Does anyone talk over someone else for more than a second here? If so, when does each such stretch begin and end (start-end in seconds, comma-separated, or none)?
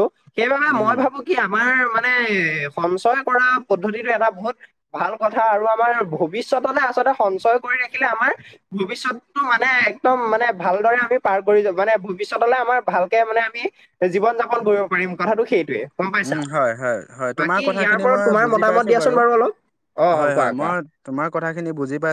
17.4-19.2